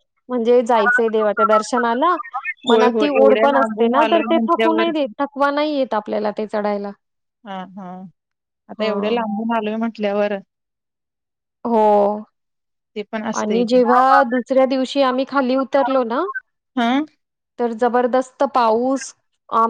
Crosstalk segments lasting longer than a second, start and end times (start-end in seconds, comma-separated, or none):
2.7-4.9